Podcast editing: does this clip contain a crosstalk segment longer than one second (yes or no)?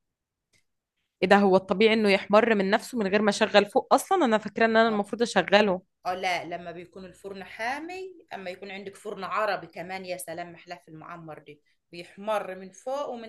no